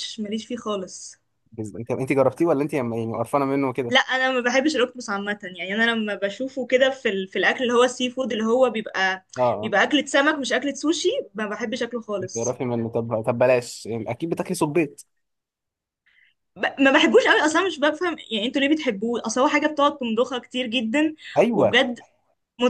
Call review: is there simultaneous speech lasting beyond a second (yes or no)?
no